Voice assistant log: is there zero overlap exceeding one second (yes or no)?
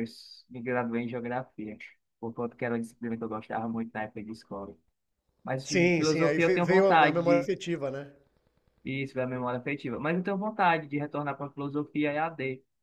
no